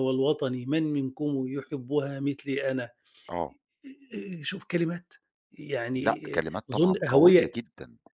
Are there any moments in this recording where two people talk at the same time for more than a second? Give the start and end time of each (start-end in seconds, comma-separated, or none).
5.9-7.6